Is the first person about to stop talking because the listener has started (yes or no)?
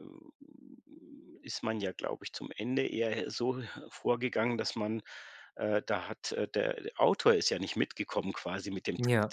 no